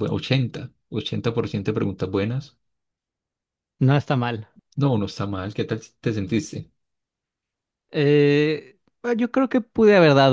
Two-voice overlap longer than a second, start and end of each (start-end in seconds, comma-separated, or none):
none